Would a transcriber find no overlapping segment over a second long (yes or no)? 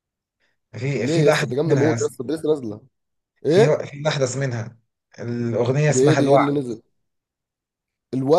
no